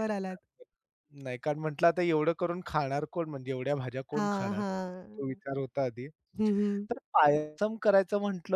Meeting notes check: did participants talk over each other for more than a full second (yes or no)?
yes